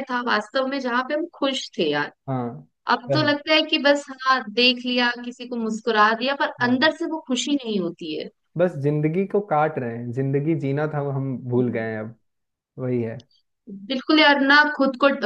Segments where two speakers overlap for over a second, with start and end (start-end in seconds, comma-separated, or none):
none